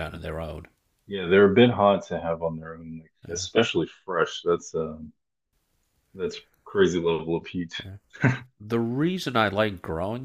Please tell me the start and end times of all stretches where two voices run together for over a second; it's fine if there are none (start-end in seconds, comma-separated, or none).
none